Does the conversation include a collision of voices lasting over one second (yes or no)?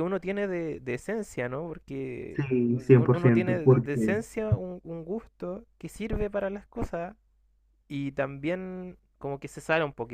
yes